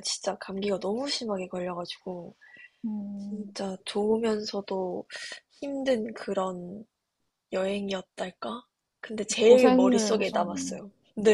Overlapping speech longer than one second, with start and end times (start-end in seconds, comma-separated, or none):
9.4-10.8